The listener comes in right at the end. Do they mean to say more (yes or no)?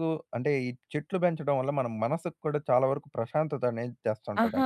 yes